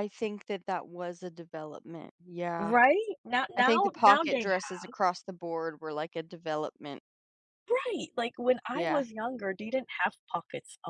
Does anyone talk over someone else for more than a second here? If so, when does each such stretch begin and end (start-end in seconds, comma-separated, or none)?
3.6-4.8